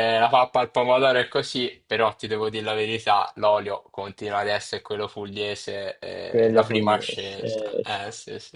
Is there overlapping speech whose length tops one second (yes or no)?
yes